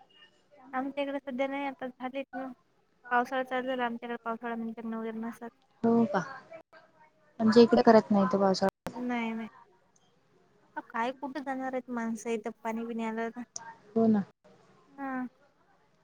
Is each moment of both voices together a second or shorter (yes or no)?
yes